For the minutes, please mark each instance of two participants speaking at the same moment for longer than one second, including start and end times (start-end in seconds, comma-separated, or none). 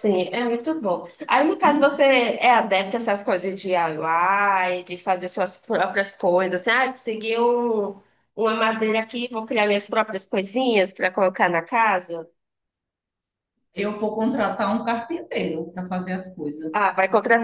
none